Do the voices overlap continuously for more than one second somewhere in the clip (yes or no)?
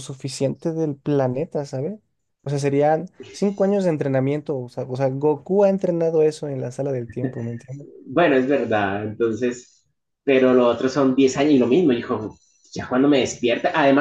no